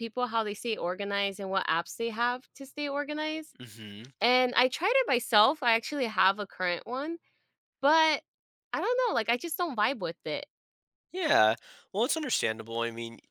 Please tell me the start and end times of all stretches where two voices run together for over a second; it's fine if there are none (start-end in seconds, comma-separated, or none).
none